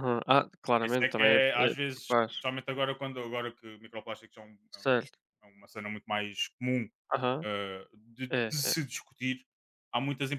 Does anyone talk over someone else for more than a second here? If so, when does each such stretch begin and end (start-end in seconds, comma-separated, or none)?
0.8-2.5